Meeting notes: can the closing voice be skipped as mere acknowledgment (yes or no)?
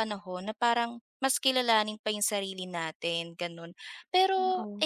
yes